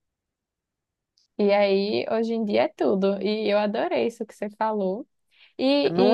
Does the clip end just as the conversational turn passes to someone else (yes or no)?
no